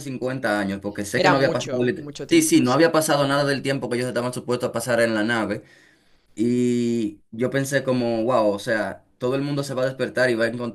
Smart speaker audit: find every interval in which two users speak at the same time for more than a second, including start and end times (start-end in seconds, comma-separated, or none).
1.2-2.8